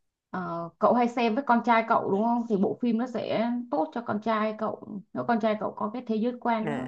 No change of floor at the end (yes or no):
no